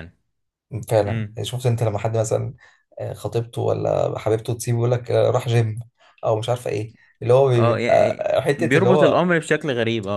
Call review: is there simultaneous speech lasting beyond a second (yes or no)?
yes